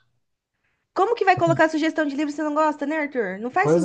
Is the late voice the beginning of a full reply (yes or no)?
yes